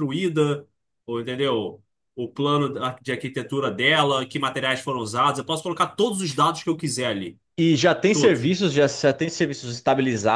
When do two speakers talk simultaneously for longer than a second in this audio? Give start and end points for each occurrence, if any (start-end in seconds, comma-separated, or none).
none